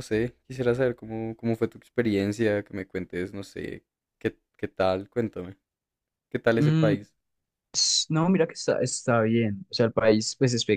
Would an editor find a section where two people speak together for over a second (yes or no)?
no